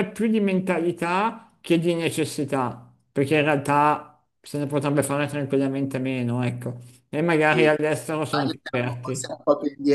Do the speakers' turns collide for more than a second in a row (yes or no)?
yes